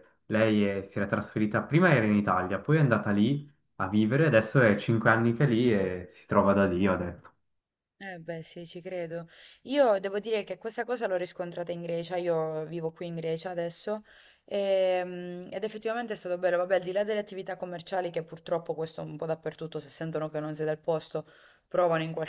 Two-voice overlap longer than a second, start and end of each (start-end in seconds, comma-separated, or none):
none